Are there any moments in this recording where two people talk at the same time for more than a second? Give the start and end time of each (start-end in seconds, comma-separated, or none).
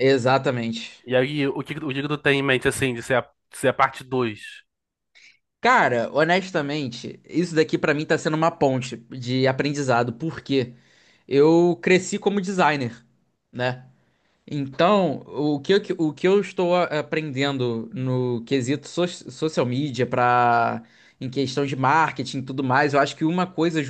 none